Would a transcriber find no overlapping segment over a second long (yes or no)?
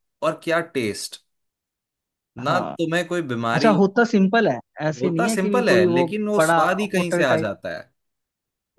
no